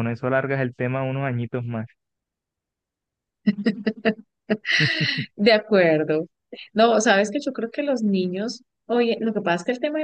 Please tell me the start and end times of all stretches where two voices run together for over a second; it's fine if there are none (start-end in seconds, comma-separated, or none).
none